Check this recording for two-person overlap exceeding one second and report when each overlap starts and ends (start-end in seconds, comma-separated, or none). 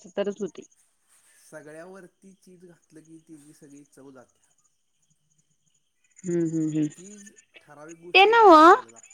none